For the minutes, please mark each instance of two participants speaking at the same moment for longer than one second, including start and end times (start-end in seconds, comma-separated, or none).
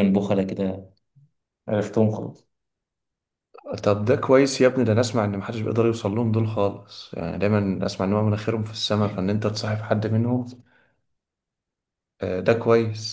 none